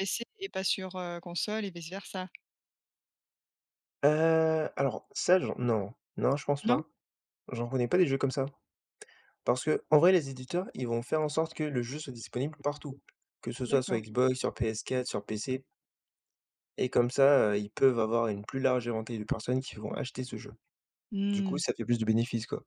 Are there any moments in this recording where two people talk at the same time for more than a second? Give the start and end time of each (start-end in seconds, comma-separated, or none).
none